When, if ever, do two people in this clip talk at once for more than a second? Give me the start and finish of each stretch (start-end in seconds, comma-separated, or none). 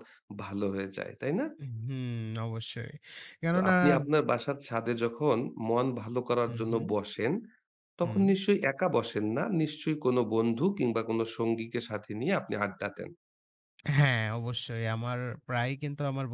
none